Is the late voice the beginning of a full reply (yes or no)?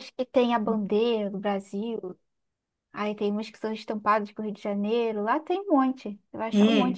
yes